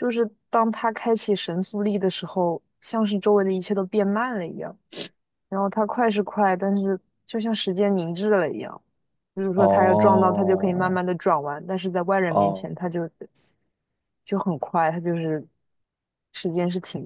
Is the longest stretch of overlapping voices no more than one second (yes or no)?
no